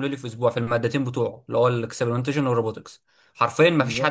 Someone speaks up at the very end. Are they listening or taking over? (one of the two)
listening